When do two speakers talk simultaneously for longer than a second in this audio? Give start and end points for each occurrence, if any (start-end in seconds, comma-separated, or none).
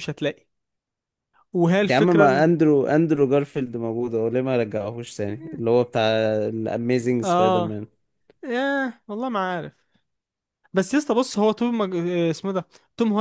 none